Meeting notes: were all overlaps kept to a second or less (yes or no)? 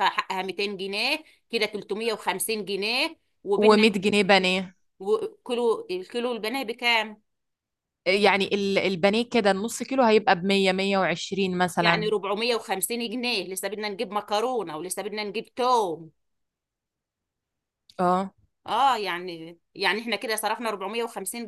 yes